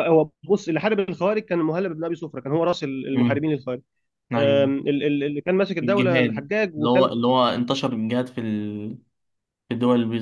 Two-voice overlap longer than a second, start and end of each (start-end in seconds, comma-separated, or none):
5.8-7.1